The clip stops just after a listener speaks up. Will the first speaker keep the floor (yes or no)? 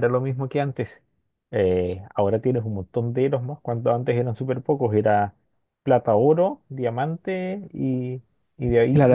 no